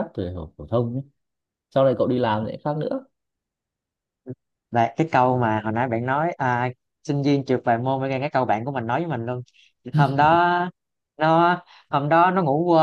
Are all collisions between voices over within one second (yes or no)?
yes